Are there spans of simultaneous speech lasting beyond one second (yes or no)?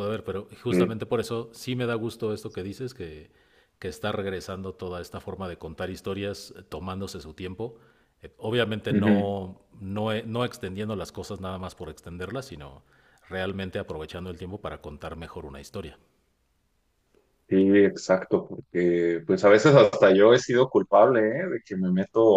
no